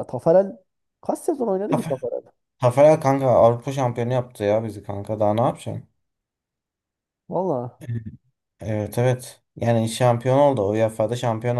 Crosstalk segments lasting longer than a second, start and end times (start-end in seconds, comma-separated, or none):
none